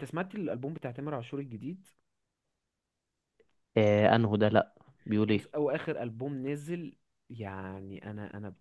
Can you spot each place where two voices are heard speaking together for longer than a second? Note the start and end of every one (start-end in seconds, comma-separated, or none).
none